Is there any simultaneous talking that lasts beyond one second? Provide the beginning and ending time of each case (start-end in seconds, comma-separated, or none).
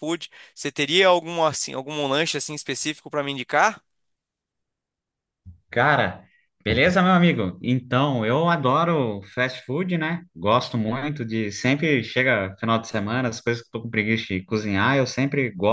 none